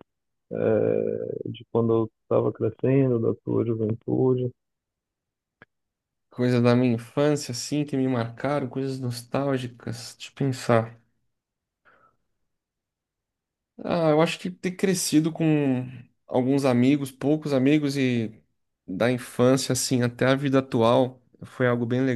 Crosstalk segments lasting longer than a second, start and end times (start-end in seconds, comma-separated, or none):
none